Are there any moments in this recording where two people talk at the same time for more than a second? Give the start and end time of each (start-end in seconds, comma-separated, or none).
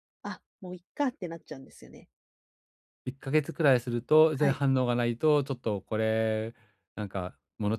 none